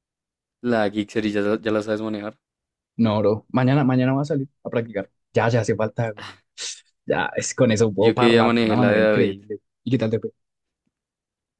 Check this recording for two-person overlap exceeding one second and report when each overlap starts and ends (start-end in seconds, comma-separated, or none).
8.0-9.4